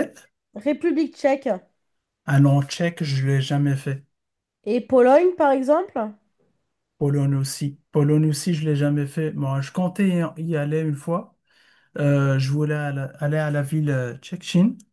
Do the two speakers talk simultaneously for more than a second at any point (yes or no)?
no